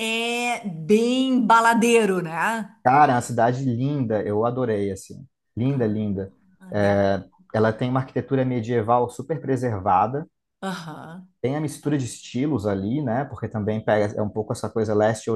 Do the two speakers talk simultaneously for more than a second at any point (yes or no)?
no